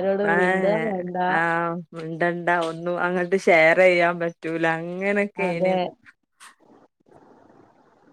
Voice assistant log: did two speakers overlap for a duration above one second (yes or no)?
no